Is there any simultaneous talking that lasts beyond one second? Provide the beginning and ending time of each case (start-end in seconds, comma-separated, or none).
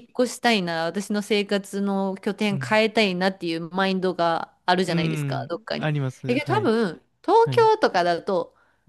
4.9-6.7